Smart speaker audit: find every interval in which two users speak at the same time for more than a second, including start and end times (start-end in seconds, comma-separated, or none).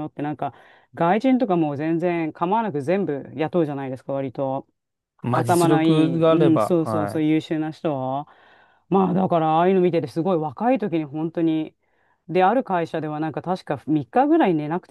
5.3-7.3